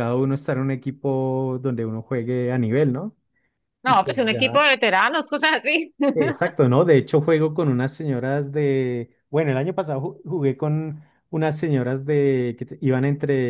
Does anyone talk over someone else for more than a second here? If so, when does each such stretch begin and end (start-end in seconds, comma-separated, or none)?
none